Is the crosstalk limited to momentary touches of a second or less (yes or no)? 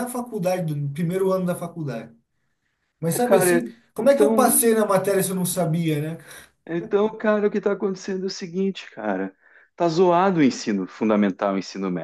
no